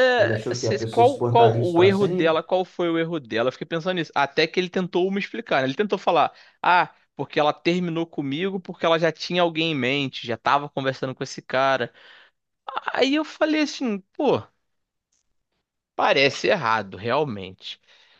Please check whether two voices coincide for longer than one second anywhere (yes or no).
yes